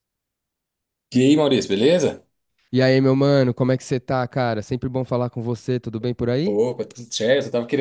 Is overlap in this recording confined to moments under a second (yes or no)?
yes